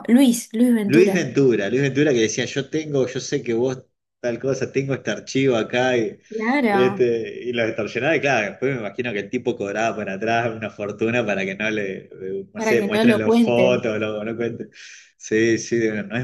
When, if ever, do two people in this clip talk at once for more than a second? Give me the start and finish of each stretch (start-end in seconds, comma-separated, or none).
12.5-13.8